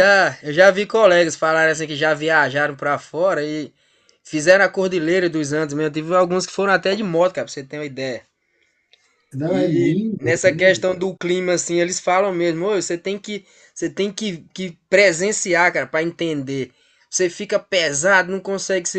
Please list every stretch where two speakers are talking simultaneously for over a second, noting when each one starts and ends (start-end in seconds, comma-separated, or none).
9.5-11.0